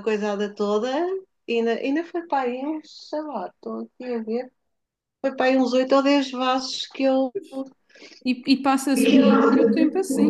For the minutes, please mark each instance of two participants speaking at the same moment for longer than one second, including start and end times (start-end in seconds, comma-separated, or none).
none